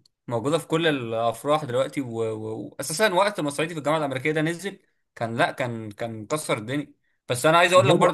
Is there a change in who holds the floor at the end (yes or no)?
no